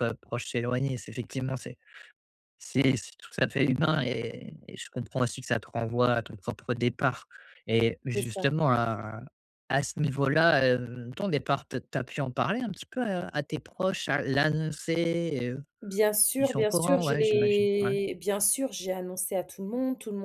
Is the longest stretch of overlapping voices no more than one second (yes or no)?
no